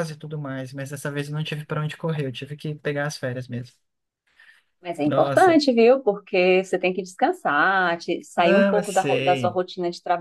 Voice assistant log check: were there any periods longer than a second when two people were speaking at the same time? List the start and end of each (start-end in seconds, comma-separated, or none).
8.4-9.6